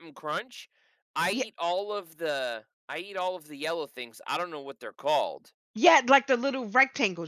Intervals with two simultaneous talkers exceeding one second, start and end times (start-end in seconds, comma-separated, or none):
none